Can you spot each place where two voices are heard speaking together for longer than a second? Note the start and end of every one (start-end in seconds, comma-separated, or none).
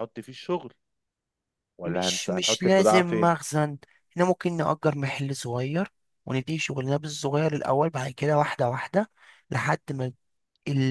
1.9-3.4